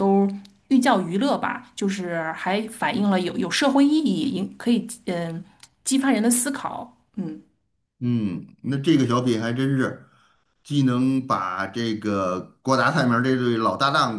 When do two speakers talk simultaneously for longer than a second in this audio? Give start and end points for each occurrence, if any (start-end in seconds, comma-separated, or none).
none